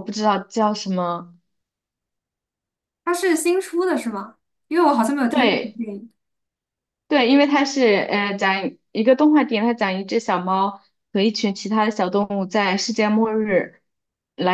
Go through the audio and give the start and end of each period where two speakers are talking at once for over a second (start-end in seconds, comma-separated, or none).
none